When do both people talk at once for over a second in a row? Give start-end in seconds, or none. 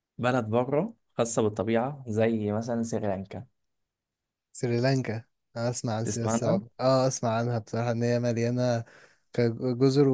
none